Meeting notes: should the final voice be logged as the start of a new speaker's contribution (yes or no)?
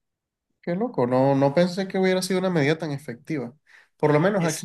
no